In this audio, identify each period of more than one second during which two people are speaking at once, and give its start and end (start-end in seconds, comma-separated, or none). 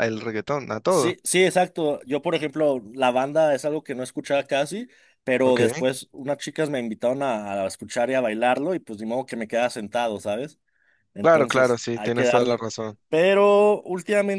11.2-12.6